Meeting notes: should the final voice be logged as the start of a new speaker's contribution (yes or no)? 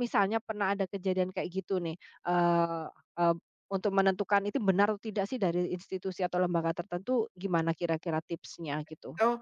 yes